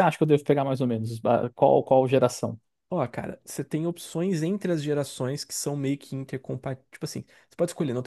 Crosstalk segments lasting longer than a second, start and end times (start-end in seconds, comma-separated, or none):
none